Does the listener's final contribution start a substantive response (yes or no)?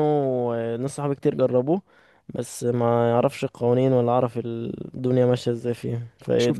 yes